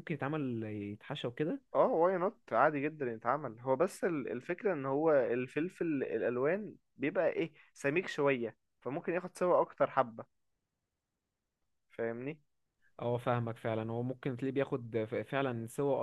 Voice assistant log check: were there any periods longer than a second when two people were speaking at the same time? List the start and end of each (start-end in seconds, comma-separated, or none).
none